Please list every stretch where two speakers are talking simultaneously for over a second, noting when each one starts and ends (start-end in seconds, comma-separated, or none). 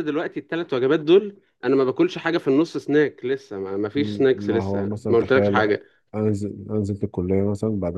4.3-5.6